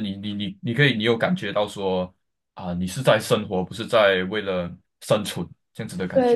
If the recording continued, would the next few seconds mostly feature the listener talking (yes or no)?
yes